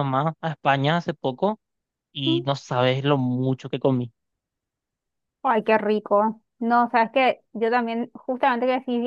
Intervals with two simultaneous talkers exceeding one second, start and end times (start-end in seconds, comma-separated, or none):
none